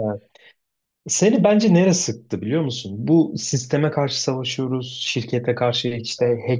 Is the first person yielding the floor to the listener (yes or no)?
no